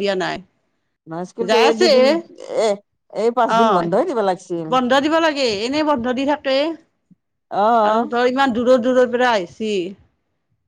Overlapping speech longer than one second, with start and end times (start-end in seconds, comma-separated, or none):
none